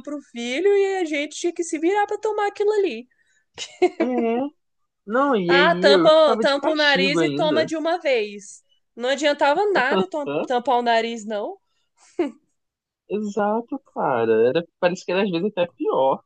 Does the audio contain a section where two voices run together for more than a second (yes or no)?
yes